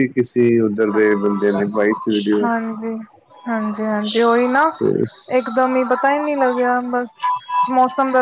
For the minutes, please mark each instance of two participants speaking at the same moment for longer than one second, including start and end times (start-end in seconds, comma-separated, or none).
none